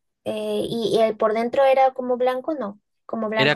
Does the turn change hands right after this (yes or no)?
yes